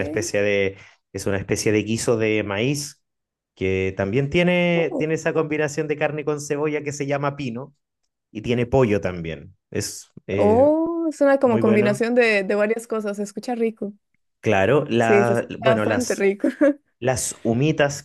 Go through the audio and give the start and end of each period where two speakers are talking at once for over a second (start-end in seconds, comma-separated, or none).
15.0-16.3